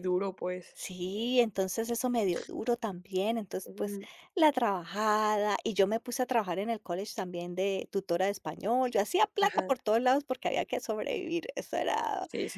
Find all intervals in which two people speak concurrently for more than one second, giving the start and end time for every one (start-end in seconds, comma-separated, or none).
none